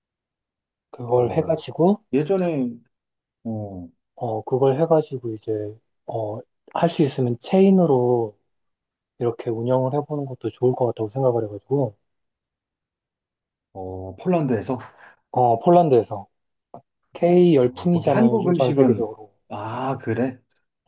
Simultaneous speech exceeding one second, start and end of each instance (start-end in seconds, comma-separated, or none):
17.6-19.1